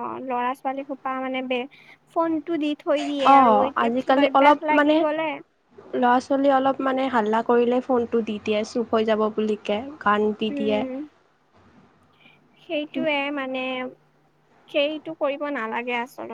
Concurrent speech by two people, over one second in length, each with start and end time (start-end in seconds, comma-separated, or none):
3.1-5.0